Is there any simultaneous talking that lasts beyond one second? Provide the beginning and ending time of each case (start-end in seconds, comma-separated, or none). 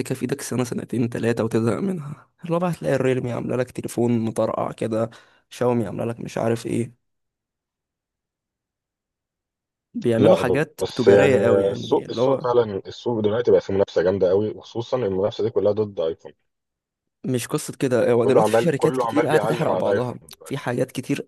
10.2-12.4, 18.2-20.6